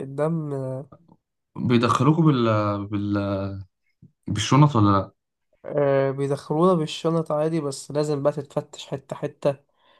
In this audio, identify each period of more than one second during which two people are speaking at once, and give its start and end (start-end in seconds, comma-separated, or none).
none